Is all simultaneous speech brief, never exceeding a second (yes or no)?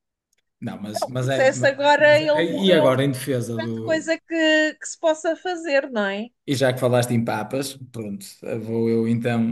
no